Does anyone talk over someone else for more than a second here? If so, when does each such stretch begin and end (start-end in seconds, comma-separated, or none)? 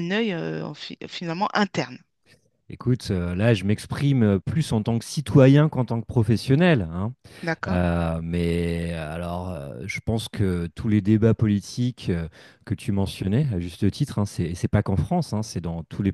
none